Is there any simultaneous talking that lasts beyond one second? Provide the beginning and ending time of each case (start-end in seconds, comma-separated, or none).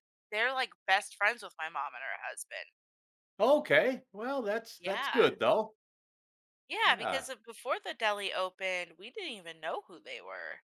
none